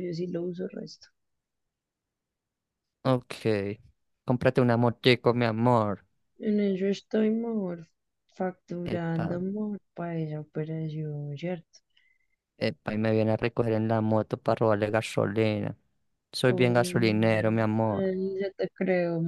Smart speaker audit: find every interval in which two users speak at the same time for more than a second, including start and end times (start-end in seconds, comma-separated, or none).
16.5-18.1